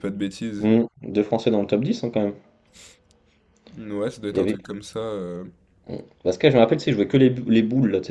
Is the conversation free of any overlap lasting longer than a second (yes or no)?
yes